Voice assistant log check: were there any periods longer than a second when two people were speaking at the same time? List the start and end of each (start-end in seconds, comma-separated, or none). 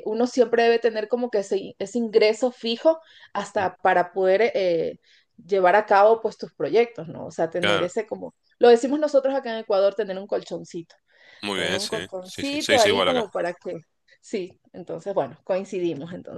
11.5-13.3